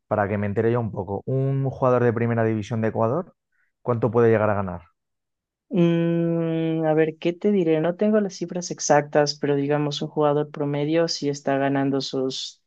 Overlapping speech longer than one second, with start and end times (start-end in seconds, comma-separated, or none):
none